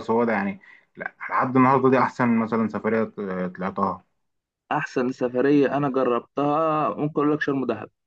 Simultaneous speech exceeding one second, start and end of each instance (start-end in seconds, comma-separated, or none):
none